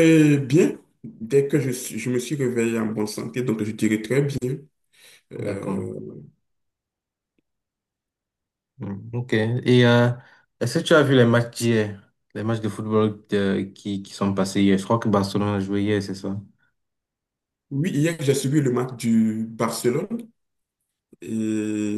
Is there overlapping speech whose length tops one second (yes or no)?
no